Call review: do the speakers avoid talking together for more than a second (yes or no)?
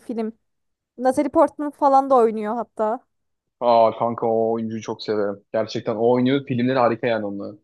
yes